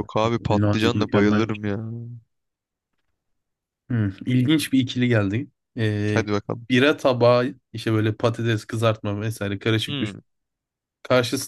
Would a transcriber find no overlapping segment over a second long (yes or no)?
no